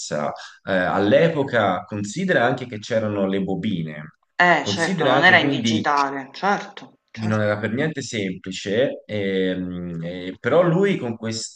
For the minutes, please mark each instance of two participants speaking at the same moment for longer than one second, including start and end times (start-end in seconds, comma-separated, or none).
4.6-5.8